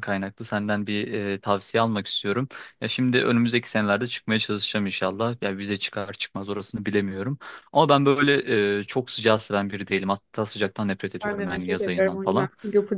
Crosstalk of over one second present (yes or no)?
yes